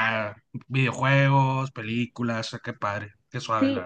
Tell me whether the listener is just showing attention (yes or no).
no